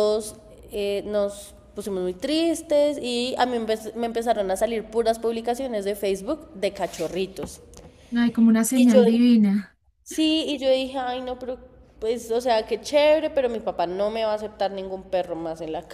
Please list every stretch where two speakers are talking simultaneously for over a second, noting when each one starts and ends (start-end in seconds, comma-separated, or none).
none